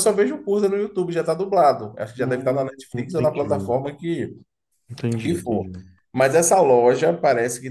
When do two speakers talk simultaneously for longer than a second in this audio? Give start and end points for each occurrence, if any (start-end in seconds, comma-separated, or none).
2.2-3.7